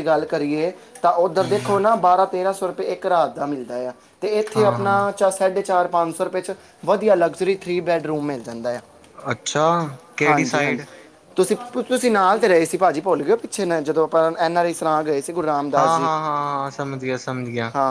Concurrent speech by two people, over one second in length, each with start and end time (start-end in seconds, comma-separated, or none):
none